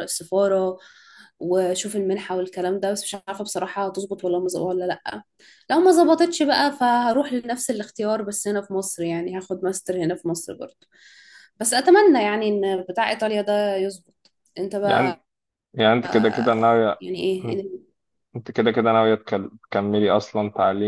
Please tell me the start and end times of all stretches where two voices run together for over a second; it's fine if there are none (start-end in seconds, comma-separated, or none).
none